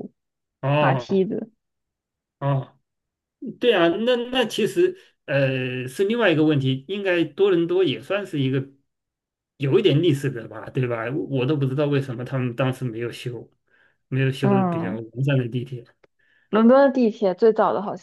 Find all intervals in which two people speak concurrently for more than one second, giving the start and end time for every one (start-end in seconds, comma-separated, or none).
none